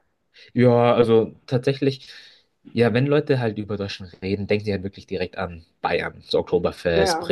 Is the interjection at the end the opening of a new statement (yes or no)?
no